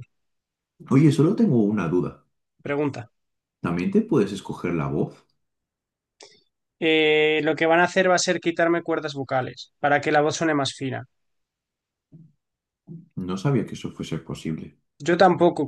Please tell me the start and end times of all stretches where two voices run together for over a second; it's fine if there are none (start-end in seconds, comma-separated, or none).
none